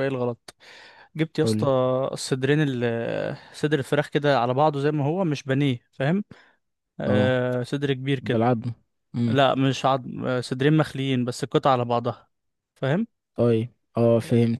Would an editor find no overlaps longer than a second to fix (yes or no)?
yes